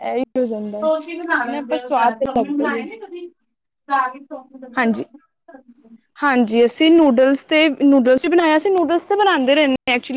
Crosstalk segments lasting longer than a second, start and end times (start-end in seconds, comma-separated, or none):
1.3-2.9